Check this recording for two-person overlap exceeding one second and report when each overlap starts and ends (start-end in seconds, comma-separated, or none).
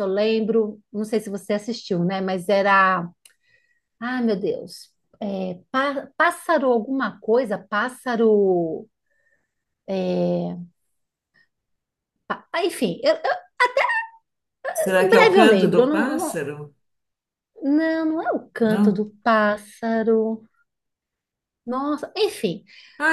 14.9-16.4